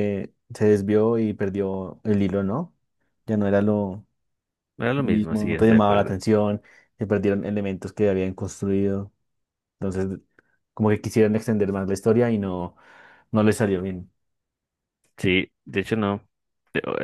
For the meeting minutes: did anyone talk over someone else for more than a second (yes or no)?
yes